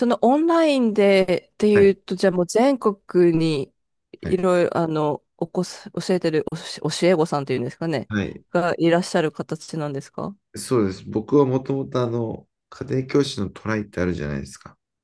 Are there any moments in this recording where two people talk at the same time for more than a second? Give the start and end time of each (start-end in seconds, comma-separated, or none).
none